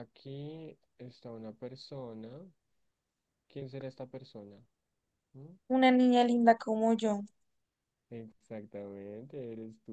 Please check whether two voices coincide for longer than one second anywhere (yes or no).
no